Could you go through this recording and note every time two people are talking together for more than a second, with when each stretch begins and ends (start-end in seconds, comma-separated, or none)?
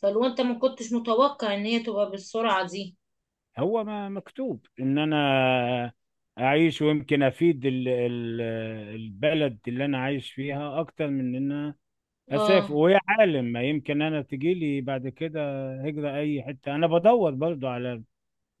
none